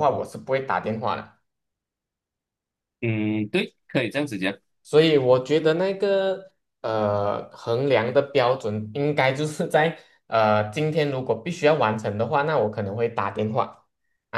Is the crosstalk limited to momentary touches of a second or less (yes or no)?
yes